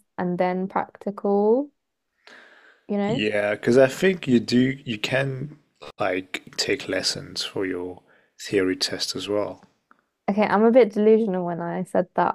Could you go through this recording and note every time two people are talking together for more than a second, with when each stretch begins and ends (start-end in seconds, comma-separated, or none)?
none